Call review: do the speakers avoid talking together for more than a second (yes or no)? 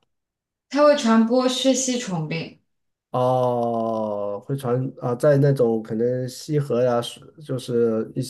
yes